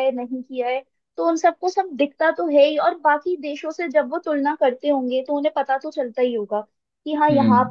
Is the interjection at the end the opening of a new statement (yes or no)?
no